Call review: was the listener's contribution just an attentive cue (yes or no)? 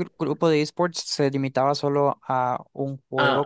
no